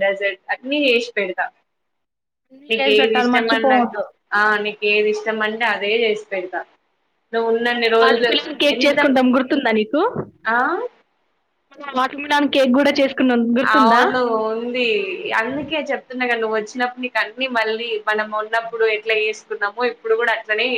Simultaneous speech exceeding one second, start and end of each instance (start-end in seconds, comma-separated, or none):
2.7-4.0